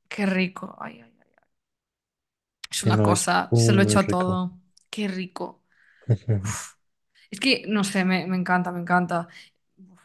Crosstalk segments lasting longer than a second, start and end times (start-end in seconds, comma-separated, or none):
2.8-4.4